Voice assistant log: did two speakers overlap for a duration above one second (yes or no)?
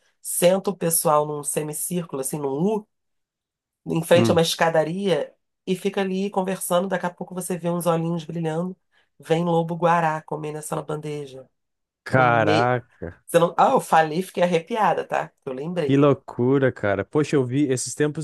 no